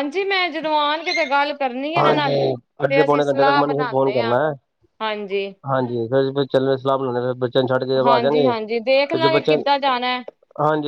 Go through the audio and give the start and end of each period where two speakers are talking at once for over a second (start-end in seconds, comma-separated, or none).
2.0-4.3, 8.0-10.2